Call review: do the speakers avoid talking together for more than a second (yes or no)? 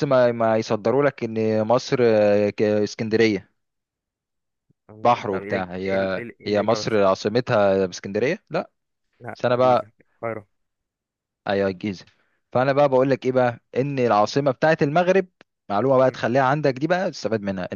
no